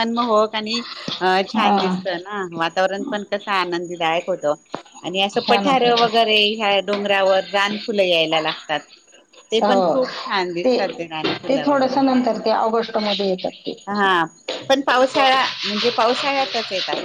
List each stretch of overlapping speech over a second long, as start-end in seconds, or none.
none